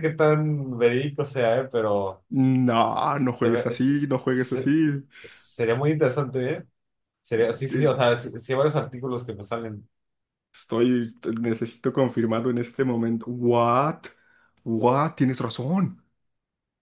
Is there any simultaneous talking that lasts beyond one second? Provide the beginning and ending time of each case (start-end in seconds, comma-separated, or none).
3.4-4.7